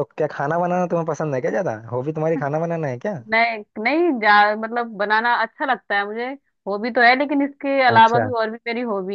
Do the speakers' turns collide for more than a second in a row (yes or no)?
no